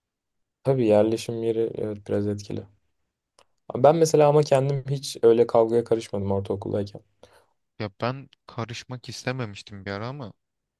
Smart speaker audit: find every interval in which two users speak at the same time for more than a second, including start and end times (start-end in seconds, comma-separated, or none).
none